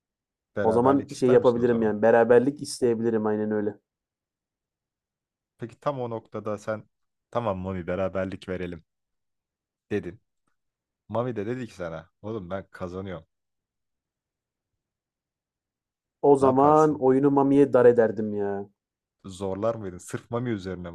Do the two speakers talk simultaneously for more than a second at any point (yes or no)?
yes